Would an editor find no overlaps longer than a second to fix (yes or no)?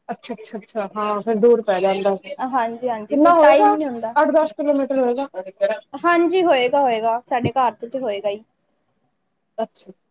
no